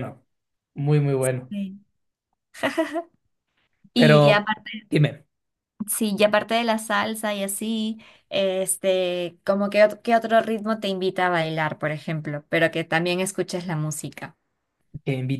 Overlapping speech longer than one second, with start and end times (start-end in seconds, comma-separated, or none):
none